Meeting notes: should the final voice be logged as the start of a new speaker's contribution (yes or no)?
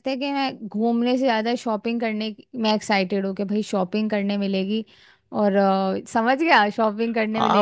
yes